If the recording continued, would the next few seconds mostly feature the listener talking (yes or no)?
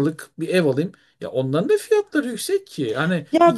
yes